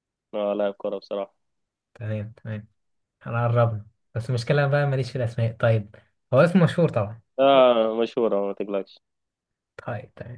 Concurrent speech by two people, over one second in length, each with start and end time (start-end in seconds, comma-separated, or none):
none